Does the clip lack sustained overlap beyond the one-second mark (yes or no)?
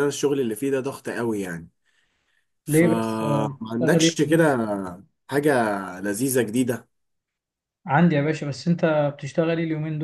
no